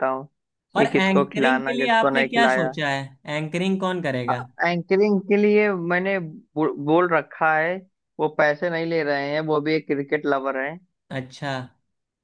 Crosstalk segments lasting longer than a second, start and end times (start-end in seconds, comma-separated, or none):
0.8-2.7